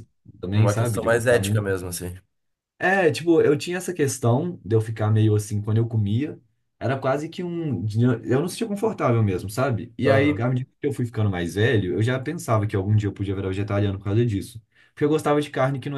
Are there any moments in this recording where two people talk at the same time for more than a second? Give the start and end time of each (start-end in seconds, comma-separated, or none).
0.5-1.8